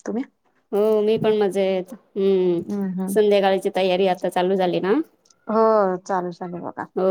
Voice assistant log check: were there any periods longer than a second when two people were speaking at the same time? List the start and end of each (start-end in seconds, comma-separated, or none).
none